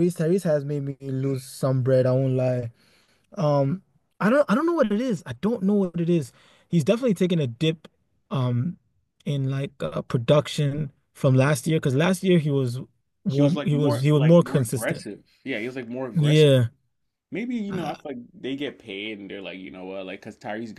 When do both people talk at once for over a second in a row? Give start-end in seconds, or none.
13.3-15.1